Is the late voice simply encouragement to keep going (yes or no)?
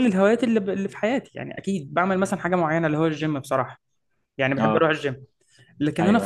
yes